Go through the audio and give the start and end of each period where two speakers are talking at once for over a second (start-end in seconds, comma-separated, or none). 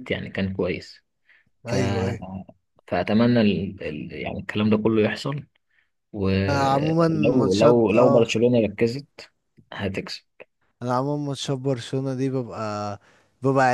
6.5-8.2